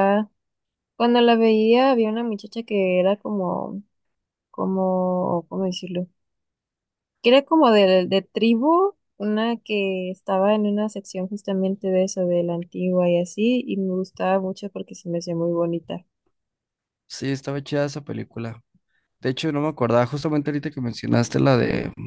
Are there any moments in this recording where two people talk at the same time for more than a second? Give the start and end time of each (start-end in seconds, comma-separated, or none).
none